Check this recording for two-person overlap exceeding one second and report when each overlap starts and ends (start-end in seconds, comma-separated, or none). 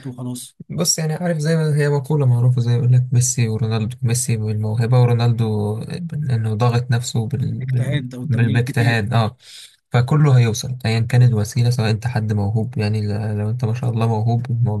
7.6-9.1